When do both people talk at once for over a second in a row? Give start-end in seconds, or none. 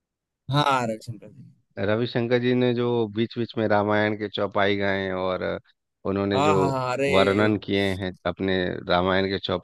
none